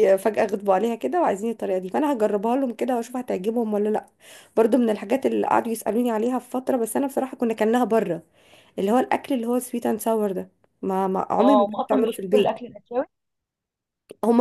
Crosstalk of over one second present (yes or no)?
yes